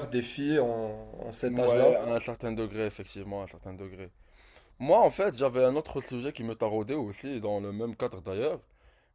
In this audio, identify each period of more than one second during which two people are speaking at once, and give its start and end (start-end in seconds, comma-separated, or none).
none